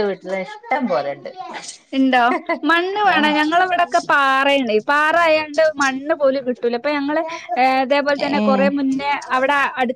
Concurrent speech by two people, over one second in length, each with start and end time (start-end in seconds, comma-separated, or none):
none